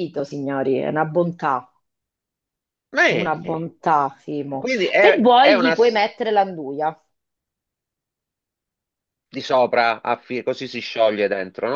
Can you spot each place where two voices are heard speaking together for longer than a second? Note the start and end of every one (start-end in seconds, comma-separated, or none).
4.6-6.0